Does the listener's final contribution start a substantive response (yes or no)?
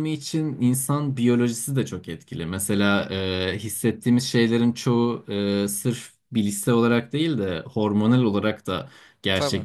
no